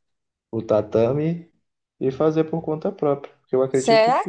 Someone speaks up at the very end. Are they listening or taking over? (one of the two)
taking over